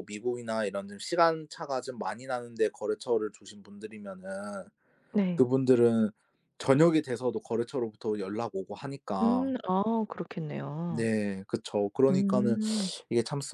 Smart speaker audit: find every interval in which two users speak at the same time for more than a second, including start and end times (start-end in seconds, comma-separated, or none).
none